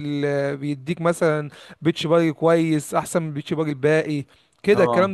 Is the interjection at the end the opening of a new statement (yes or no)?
no